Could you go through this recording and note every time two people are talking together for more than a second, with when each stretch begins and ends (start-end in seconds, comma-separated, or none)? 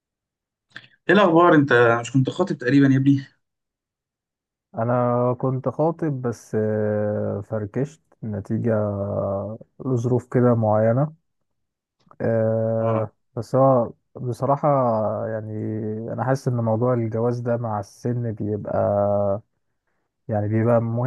none